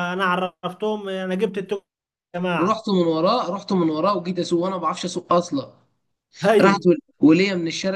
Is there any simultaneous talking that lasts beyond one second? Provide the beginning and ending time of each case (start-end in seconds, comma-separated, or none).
none